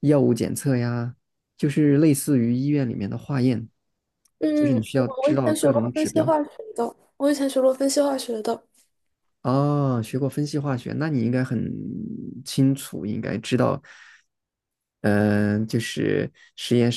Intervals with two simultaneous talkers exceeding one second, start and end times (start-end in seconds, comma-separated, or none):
4.5-6.3